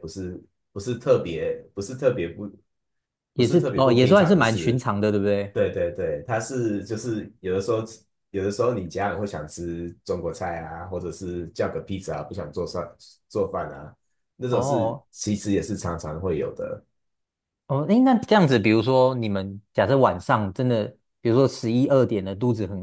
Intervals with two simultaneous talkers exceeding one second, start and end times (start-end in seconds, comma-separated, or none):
3.4-4.8